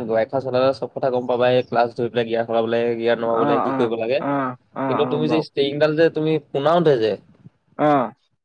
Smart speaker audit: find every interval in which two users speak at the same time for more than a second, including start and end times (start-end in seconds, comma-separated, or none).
3.3-5.4